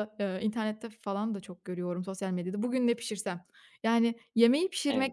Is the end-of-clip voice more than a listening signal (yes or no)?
no